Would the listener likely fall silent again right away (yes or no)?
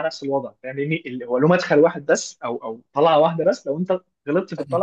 yes